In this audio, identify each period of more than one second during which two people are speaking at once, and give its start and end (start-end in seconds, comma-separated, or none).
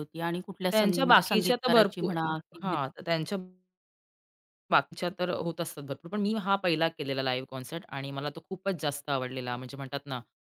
0.7-2.1